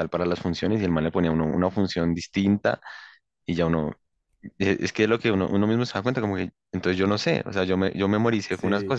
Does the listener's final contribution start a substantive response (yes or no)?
yes